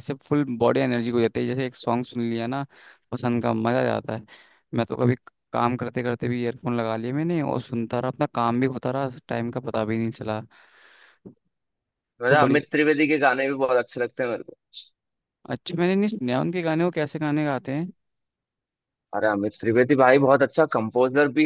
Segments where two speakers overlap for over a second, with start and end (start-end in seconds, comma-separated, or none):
none